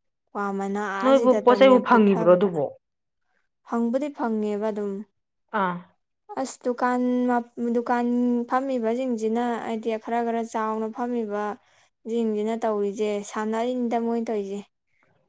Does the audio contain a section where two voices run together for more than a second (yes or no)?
yes